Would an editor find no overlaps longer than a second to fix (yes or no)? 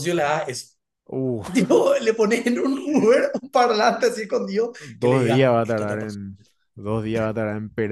no